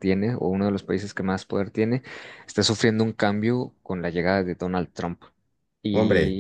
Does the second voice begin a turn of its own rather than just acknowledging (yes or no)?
yes